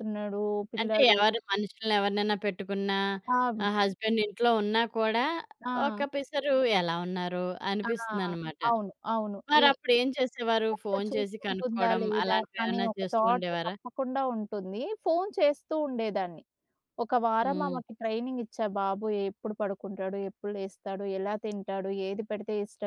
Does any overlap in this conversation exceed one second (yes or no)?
yes